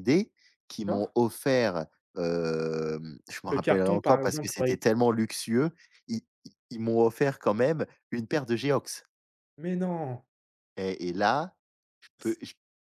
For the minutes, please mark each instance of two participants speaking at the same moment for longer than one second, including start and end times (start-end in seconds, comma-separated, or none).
3.5-4.8